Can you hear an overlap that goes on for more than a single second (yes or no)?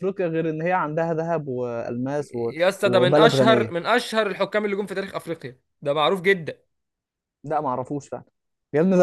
yes